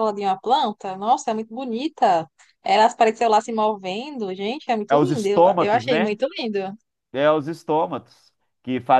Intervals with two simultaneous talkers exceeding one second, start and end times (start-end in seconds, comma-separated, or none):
4.9-6.2